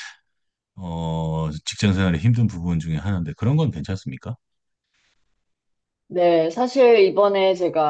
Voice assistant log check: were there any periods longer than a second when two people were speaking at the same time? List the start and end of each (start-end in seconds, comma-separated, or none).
none